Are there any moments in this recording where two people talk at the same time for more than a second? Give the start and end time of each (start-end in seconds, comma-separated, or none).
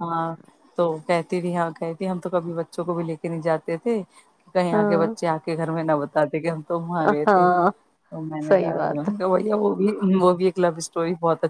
none